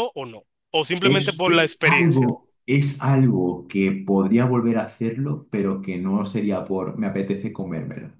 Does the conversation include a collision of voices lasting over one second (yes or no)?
yes